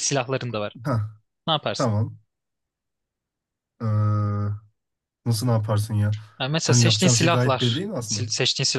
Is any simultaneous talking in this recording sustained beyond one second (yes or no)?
yes